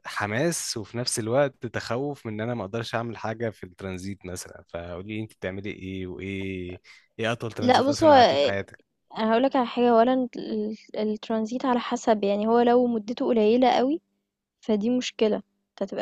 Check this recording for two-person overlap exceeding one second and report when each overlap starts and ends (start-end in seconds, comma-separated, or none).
none